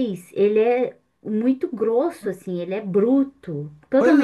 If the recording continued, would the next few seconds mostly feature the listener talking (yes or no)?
yes